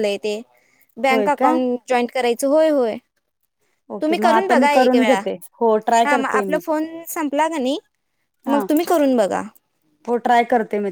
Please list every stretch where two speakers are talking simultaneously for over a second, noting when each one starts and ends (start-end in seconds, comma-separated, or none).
4.0-5.2